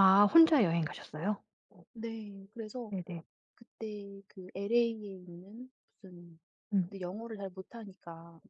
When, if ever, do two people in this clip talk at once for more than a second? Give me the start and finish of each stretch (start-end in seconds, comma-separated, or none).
none